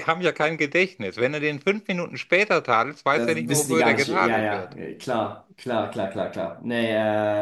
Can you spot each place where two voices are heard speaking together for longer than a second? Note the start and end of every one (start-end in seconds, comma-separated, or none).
3.1-4.8